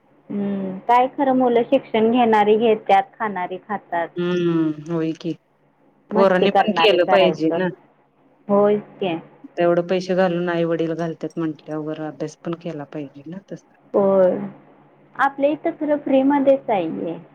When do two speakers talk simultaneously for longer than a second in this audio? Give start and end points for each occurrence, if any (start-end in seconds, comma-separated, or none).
6.1-7.6